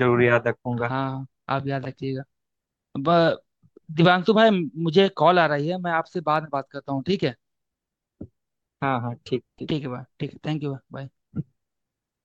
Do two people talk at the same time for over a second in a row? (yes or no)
no